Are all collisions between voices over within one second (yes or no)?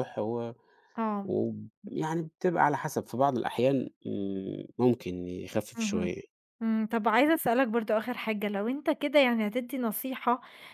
yes